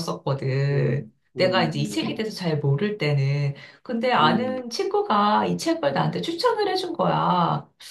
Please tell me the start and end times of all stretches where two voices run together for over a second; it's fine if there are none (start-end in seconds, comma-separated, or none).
0.7-2.1